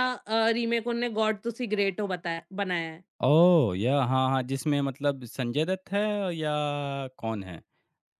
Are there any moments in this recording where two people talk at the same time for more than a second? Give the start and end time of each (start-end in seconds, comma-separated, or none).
none